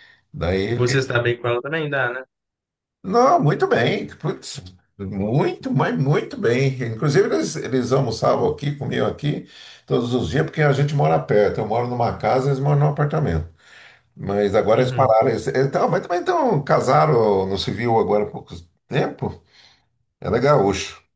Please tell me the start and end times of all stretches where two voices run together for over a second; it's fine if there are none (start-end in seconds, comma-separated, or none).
none